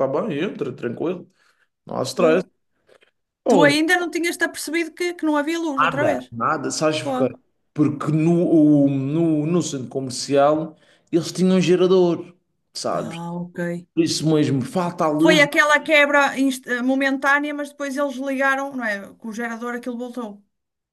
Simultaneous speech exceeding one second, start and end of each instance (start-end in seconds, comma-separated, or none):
none